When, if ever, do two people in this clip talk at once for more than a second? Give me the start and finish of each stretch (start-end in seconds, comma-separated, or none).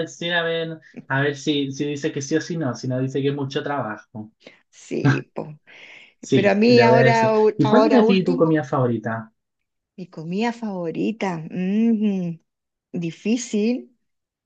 6.3-8.6